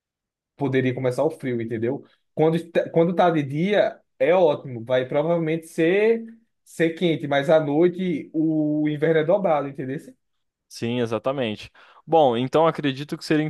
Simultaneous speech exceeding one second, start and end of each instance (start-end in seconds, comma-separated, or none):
none